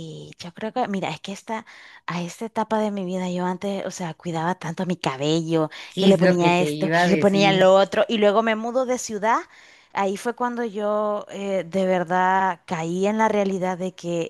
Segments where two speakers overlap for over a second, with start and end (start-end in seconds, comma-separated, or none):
5.9-7.7